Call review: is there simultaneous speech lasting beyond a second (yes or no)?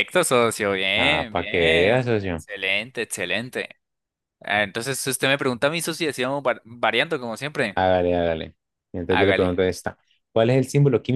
yes